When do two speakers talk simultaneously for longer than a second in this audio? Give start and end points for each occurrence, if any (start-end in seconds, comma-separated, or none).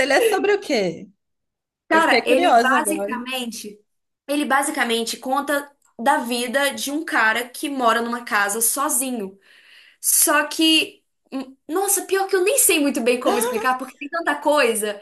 1.9-3.2